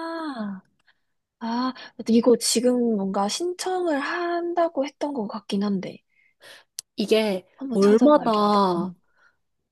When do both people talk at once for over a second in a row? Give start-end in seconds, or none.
7.6-8.9